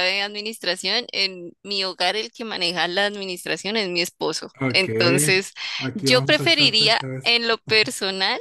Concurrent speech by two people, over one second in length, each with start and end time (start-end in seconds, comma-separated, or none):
5.9-7.4